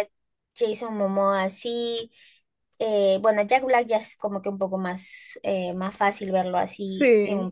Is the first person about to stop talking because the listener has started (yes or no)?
no